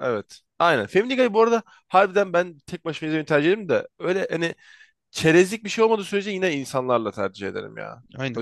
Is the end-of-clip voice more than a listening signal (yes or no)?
yes